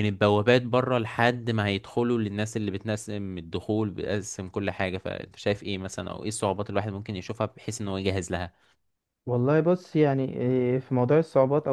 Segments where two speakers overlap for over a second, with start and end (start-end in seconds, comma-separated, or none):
none